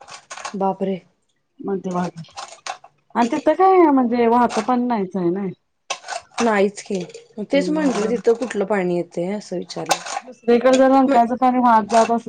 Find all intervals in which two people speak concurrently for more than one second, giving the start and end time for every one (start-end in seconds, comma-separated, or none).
none